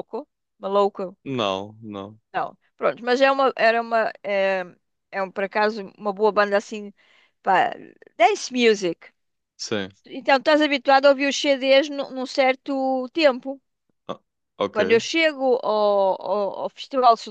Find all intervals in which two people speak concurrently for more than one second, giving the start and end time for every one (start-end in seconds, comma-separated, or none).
none